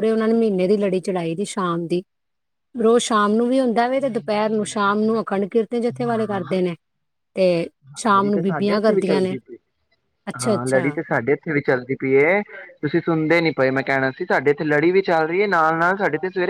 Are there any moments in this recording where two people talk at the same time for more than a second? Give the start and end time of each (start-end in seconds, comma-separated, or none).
4.1-5.5, 8.2-9.3